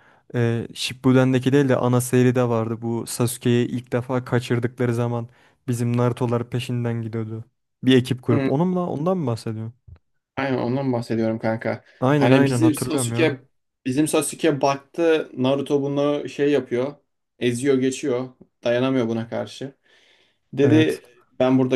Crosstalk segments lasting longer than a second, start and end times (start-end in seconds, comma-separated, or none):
12.0-13.4